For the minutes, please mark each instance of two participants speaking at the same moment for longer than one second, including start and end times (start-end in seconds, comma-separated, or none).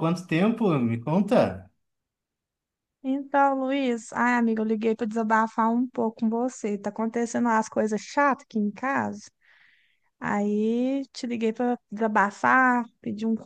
none